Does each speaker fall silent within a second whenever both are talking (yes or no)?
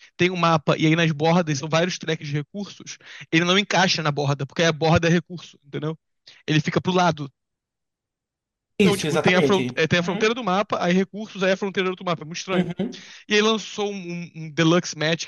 no